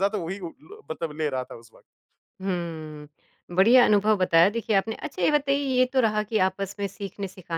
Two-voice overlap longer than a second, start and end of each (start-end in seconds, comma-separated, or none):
none